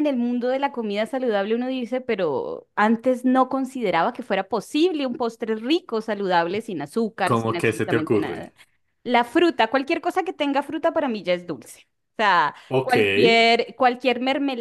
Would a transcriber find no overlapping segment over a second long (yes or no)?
no